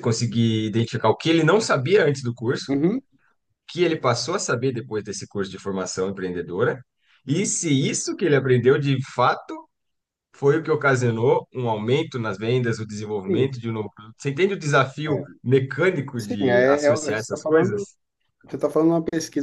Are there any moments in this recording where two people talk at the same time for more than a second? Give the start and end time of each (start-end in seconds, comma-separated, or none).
16.2-17.9